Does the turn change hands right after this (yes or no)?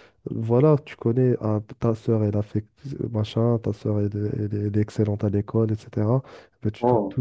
no